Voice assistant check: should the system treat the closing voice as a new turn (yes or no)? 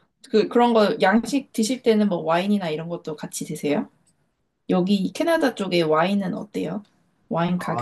yes